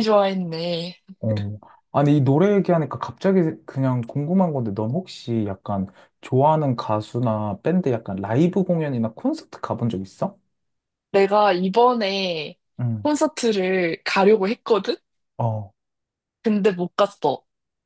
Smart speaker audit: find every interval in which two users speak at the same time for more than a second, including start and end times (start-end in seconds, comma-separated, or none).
none